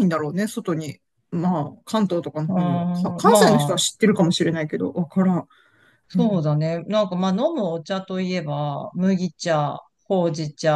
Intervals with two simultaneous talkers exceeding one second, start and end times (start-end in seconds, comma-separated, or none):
2.5-3.8